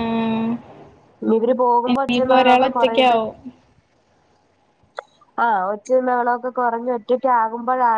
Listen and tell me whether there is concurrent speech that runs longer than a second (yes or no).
yes